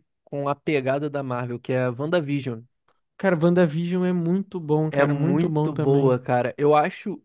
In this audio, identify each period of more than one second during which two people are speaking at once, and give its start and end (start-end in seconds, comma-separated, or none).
4.9-6.2